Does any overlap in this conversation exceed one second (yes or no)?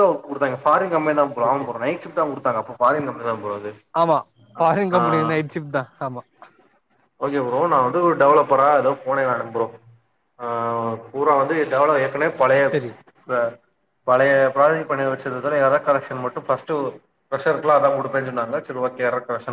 no